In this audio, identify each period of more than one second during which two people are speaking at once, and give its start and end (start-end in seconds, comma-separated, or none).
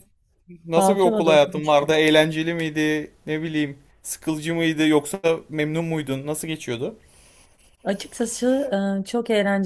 0.8-2.0